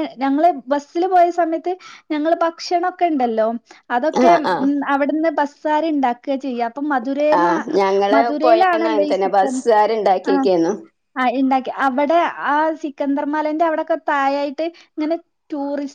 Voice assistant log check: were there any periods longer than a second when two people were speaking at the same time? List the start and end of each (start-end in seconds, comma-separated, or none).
none